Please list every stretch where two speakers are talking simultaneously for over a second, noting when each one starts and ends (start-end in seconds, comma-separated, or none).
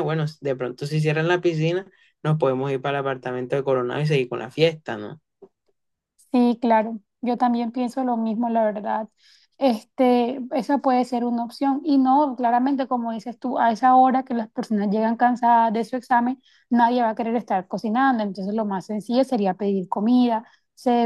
none